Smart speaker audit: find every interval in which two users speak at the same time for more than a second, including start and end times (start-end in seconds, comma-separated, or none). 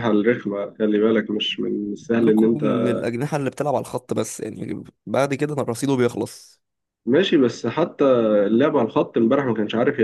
none